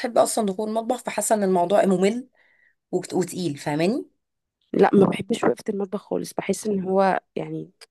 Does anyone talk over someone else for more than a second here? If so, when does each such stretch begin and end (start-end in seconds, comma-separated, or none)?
none